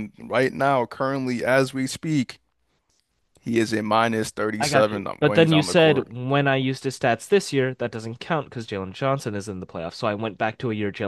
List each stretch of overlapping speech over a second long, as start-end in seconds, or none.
4.6-6.1